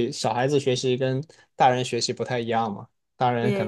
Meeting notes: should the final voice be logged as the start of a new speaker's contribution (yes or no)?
no